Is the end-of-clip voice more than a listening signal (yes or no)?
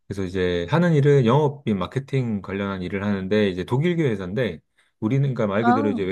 no